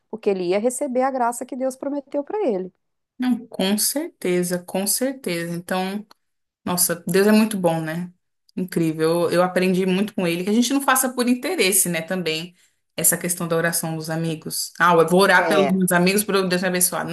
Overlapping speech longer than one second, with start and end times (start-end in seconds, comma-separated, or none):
none